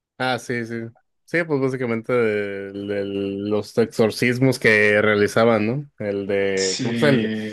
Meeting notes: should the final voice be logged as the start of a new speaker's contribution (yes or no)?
no